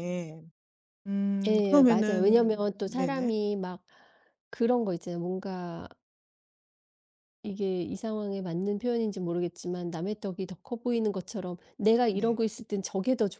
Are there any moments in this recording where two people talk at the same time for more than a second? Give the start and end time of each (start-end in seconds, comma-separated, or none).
1.5-3.3